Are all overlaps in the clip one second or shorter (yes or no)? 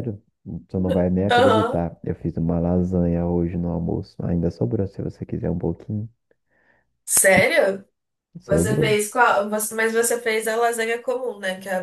yes